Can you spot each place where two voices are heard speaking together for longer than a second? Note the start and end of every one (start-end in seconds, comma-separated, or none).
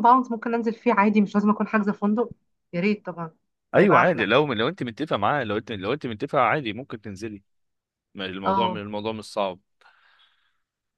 none